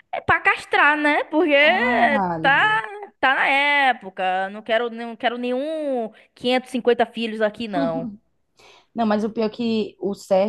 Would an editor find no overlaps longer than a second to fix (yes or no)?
yes